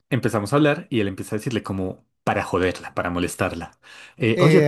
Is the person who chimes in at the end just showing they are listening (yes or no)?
no